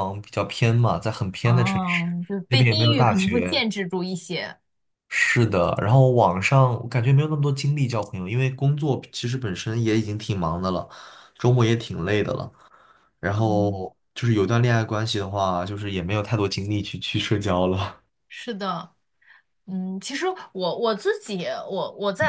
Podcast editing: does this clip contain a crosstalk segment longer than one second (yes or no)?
yes